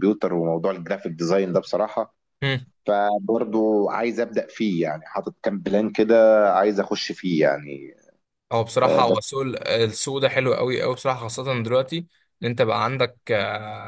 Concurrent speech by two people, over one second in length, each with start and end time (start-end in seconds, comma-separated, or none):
none